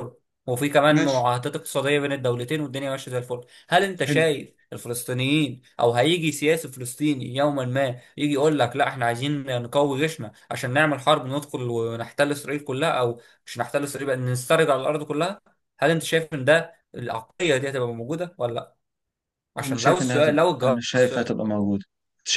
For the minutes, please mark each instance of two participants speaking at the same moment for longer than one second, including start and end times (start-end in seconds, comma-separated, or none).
19.6-21.3